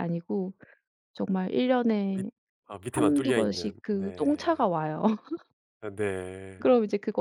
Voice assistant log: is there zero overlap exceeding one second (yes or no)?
no